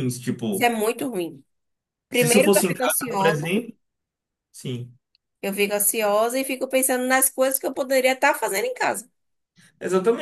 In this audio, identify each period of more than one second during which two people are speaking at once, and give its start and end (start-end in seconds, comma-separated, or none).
2.1-3.5